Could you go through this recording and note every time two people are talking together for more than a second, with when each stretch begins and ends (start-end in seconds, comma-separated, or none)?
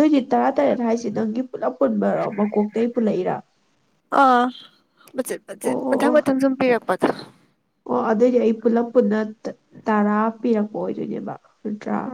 none